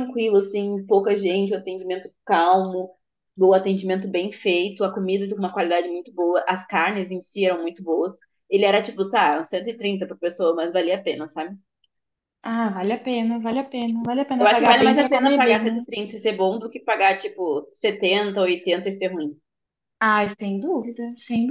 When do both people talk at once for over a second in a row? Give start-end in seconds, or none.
14.4-15.8